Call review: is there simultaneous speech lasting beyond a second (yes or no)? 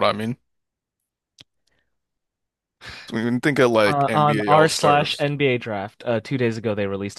yes